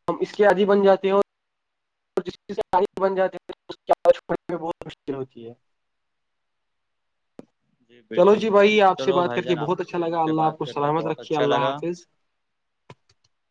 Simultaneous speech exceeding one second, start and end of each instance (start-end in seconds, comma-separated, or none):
8.1-11.7